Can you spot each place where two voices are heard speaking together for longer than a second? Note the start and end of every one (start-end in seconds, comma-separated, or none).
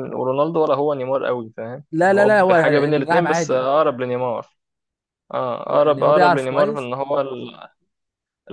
1.9-3.6, 5.7-6.9